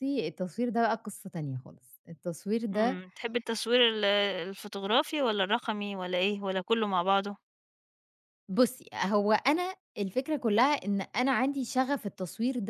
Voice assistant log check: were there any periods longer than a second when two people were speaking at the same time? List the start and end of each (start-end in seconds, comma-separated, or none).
none